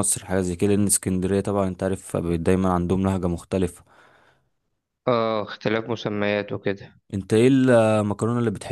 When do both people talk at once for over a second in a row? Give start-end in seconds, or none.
none